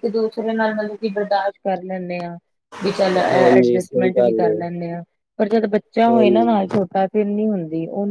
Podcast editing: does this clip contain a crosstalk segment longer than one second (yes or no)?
yes